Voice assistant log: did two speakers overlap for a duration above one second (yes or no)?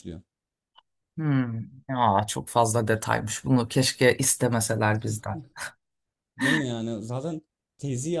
no